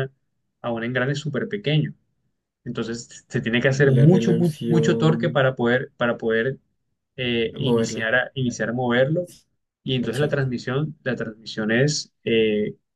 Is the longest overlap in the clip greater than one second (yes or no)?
yes